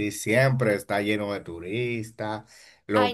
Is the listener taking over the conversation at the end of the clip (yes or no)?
no